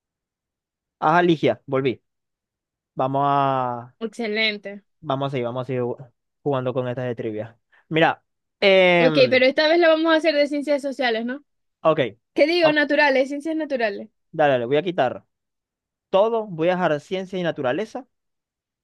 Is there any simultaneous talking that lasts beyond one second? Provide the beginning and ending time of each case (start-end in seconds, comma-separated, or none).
none